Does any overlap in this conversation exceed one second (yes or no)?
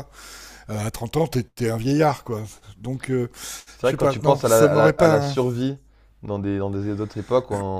yes